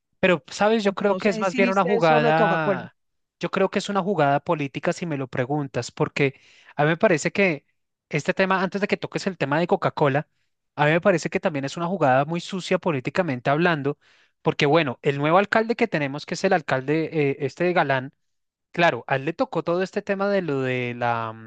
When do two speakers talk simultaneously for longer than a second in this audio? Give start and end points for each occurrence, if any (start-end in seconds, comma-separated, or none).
0.8-2.8